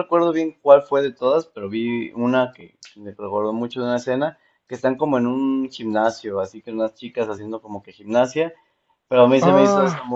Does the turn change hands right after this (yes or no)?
no